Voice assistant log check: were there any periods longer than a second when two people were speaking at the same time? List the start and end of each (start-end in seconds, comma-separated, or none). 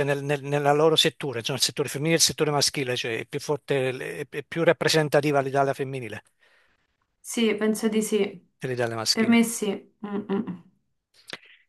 none